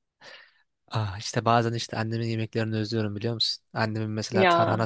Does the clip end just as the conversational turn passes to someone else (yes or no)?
no